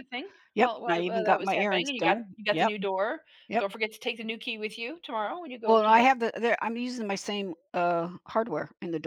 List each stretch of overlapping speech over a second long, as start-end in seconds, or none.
0.6-2.7